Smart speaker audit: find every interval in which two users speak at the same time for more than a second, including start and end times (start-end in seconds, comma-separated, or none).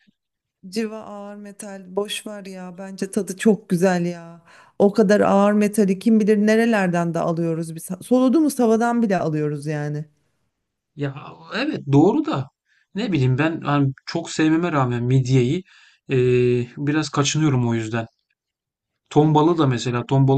none